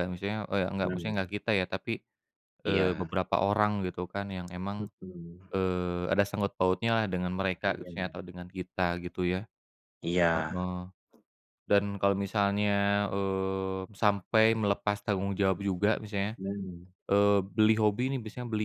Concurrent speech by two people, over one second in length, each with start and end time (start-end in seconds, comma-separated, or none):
none